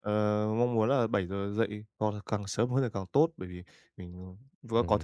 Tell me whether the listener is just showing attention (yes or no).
yes